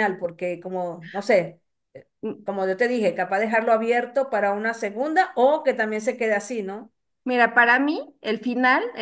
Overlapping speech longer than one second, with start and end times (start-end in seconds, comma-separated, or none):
none